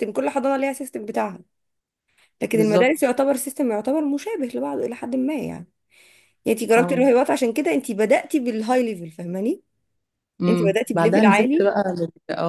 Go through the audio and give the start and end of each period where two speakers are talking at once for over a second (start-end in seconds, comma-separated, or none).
10.5-11.7